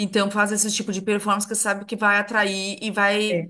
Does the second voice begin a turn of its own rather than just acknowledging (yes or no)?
no